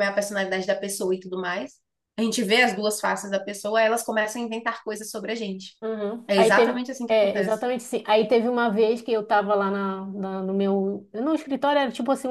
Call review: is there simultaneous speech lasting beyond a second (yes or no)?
yes